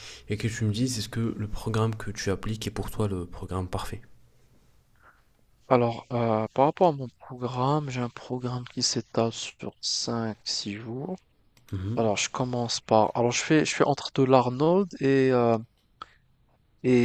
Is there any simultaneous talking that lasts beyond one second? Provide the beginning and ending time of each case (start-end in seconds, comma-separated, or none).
none